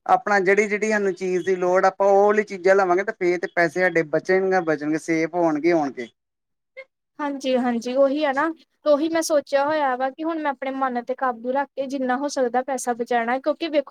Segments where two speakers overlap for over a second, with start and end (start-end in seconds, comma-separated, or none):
none